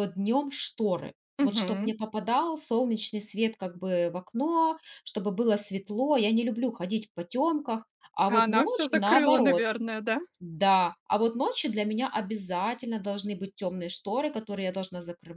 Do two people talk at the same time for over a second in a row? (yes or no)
yes